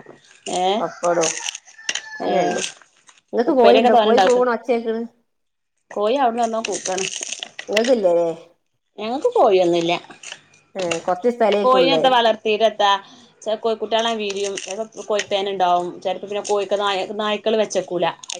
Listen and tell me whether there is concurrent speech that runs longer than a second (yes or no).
no